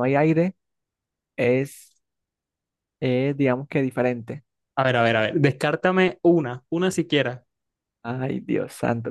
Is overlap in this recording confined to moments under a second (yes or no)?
yes